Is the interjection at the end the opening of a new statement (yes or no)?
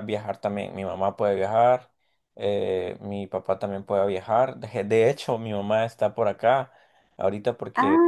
no